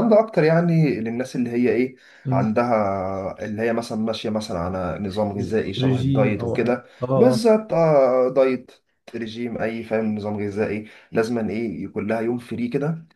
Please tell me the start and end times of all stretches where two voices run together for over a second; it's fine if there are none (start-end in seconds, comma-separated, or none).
5.8-7.5